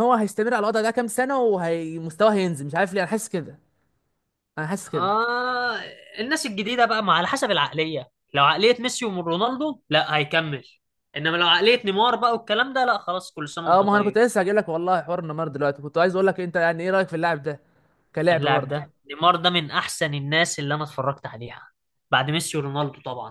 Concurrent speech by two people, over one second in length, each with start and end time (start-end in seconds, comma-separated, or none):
none